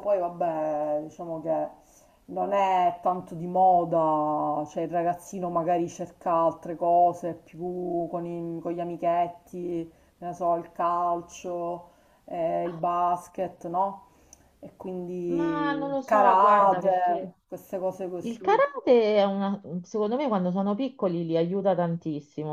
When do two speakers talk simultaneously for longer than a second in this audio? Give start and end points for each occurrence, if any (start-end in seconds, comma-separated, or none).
15.3-17.4